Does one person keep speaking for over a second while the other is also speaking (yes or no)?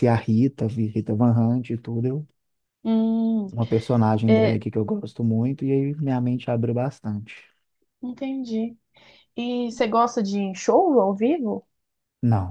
no